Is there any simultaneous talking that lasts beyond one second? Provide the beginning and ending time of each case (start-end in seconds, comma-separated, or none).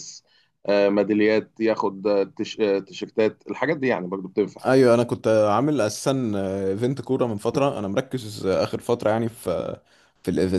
none